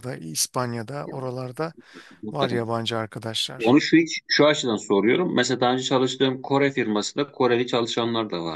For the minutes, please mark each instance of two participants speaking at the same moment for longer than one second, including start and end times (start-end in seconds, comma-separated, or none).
none